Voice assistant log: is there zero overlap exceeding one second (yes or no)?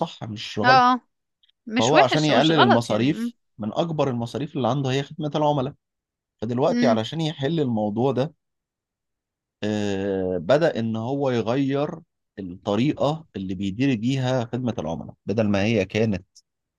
no